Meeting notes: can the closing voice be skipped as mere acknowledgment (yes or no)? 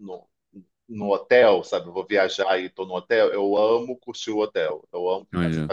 yes